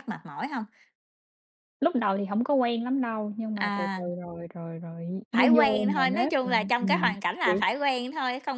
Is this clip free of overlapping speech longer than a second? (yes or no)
no